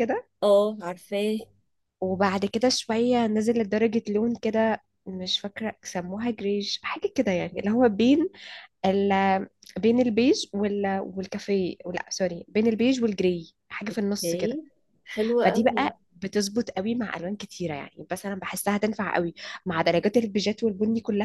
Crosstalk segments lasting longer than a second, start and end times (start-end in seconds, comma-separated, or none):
none